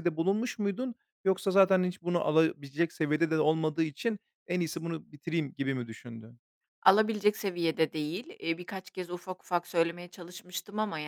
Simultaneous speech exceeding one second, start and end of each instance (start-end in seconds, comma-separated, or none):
none